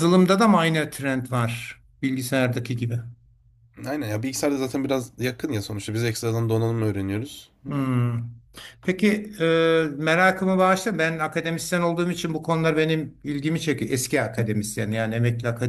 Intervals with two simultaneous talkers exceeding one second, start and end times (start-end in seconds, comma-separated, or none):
none